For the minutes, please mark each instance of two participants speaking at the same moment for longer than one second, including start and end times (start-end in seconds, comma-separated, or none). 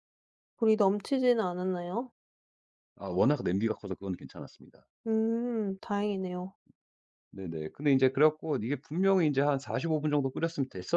none